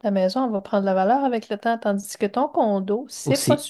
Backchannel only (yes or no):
no